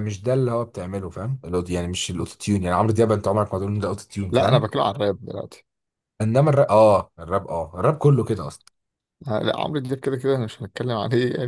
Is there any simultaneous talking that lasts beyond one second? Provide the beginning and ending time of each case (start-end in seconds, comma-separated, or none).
none